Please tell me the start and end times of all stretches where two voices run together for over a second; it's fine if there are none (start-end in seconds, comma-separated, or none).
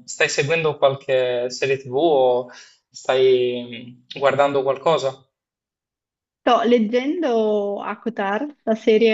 none